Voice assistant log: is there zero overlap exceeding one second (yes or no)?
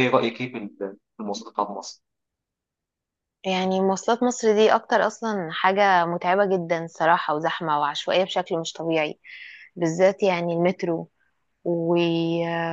yes